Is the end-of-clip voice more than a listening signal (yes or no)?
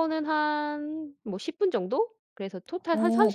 yes